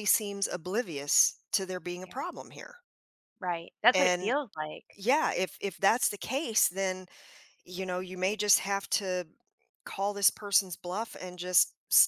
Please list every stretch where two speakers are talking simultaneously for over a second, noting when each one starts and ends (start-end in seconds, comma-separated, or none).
none